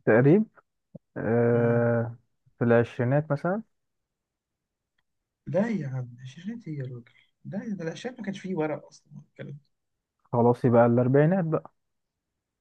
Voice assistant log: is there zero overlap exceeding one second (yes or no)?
yes